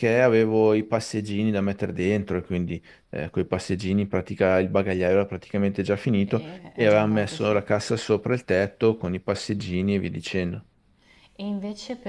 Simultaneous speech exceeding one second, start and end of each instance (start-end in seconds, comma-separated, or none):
6.2-7.6